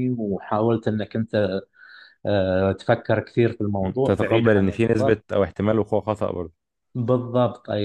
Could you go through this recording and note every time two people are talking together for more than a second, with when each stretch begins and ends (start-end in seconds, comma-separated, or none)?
3.8-5.2